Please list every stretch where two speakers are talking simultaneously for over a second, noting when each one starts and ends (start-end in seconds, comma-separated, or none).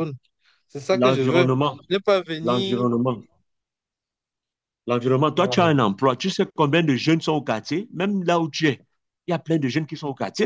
none